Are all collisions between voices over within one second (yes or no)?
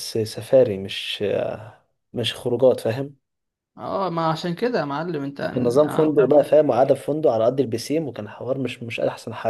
yes